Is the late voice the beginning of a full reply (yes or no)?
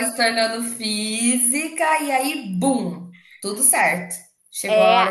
no